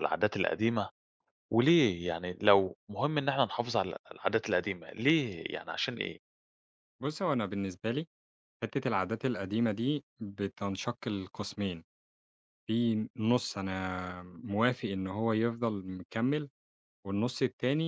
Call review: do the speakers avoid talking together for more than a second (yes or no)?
yes